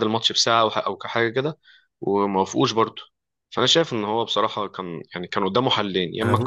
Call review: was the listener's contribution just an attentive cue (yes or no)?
yes